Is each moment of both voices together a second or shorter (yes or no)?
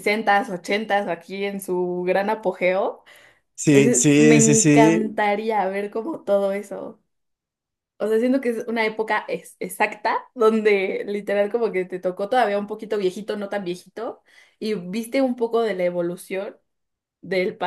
no